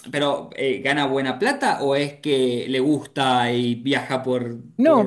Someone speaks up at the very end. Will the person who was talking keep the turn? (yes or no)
no